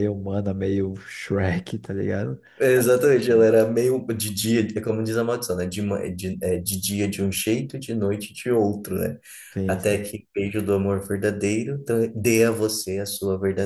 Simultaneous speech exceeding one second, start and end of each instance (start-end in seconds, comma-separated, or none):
none